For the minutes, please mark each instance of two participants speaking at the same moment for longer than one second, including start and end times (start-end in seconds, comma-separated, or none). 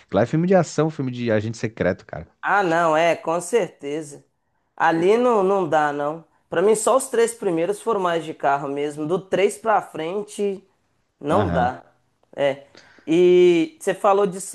none